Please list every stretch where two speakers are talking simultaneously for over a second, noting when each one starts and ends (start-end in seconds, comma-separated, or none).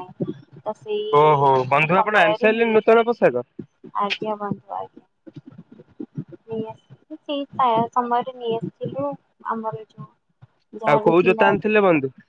1.6-3.3